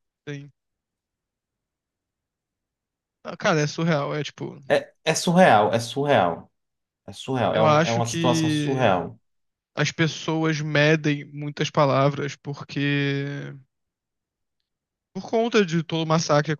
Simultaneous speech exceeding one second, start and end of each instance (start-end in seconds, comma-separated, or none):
7.5-9.0